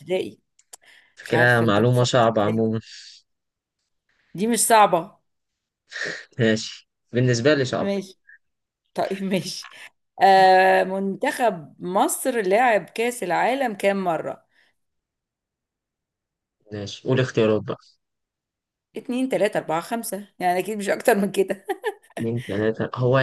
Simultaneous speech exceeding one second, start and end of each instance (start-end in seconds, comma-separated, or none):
1.2-2.6